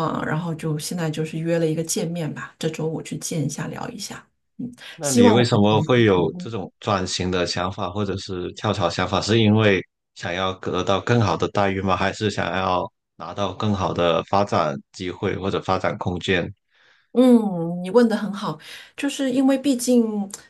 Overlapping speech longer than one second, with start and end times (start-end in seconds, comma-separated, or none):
5.0-6.5